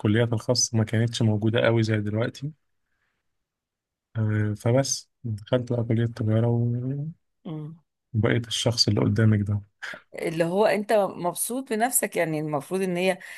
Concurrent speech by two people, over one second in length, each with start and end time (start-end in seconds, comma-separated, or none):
none